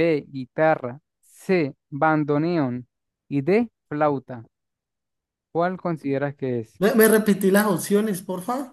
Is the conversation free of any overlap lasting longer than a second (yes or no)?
yes